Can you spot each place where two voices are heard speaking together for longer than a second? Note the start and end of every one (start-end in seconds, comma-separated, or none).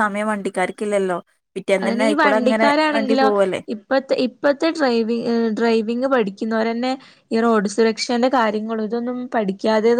none